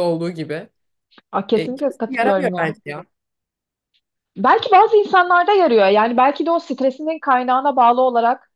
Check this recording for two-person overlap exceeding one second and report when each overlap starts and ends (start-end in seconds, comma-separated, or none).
1.6-2.8